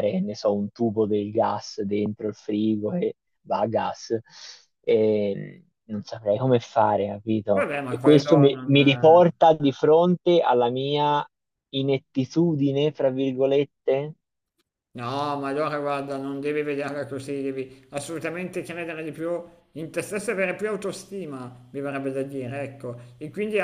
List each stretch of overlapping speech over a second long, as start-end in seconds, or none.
7.5-9.2